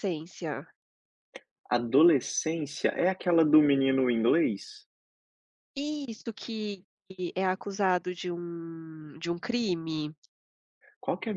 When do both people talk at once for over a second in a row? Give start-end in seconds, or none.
none